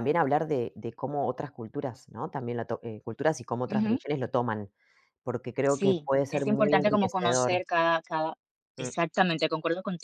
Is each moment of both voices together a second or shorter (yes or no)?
no